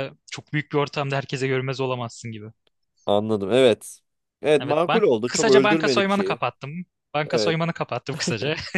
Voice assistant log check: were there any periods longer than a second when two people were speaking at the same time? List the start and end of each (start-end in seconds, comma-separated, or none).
4.6-6.4